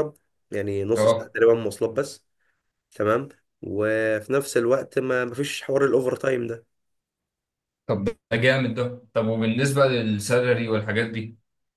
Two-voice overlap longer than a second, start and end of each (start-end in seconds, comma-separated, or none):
none